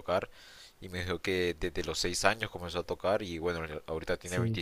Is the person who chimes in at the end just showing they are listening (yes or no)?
yes